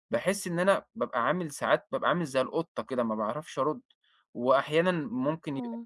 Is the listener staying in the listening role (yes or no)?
yes